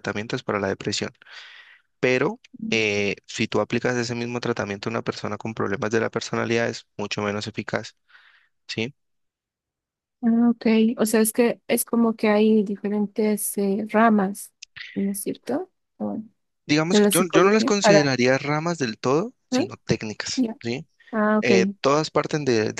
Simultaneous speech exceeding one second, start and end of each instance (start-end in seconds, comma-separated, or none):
16.9-18.1